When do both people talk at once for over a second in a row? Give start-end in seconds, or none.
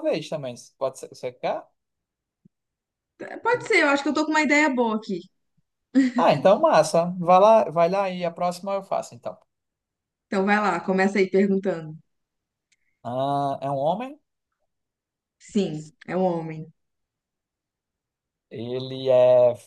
none